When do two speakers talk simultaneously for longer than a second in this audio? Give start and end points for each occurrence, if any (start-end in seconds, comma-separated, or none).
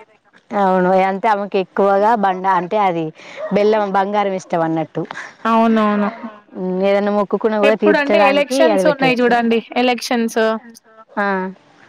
7.7-9.3